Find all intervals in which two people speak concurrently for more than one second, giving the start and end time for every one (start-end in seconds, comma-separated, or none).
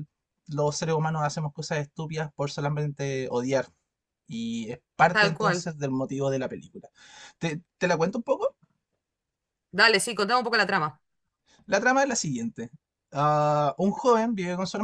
none